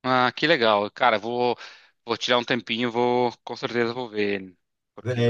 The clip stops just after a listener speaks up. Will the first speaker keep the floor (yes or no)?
no